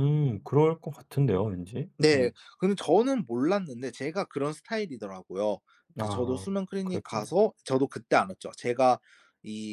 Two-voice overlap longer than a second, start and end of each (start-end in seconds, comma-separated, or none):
6.0-7.4